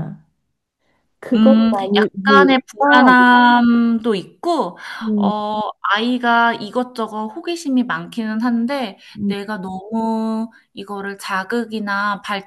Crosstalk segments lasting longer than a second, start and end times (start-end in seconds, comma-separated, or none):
1.3-3.1